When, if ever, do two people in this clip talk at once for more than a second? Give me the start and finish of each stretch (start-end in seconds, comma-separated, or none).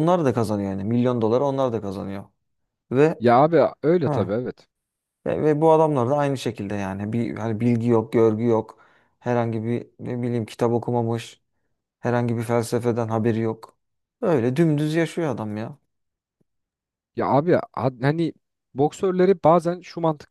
none